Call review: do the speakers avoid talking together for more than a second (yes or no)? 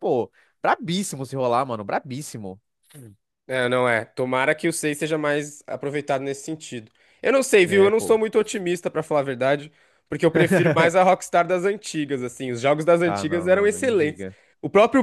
no